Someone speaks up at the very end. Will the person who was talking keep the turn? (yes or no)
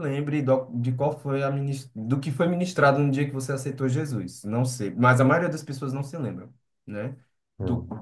yes